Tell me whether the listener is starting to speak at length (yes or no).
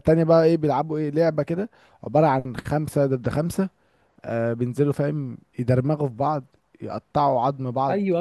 yes